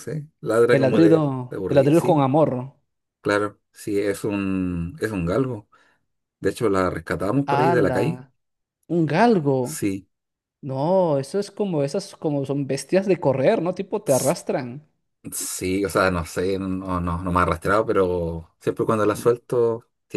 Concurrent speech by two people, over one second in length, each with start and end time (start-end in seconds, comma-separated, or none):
0.7-2.2